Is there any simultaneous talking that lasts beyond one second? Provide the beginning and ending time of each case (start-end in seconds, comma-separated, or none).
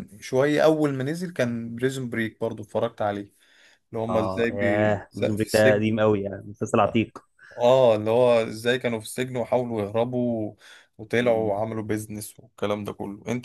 4.1-5.8